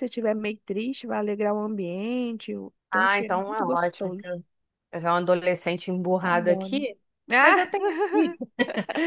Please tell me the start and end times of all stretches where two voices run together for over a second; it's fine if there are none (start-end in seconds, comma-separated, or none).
2.9-4.4